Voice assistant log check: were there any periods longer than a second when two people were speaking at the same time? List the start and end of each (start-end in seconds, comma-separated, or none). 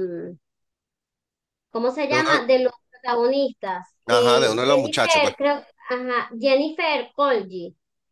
4.1-5.3